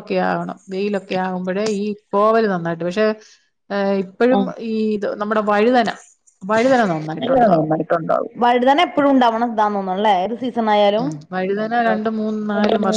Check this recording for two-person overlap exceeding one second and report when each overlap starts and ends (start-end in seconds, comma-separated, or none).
none